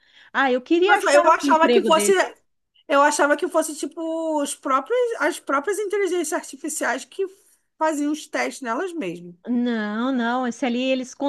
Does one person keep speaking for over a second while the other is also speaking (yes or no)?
yes